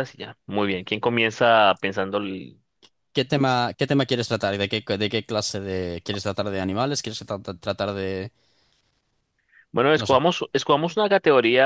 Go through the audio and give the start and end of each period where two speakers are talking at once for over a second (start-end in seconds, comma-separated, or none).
none